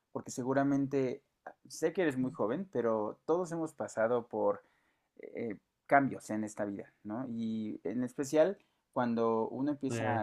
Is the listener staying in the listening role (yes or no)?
yes